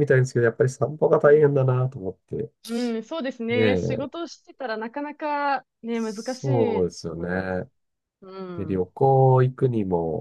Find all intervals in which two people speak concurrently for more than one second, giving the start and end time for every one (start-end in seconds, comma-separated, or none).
5.9-7.5